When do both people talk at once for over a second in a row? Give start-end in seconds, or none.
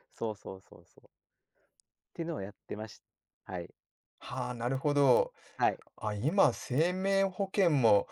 none